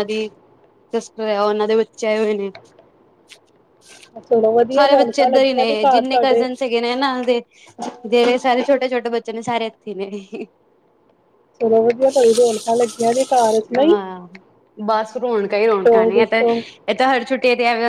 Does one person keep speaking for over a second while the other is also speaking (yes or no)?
yes